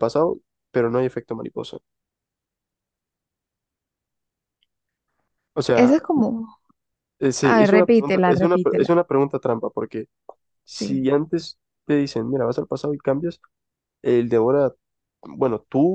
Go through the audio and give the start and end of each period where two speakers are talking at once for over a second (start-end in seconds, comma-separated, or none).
7.4-8.9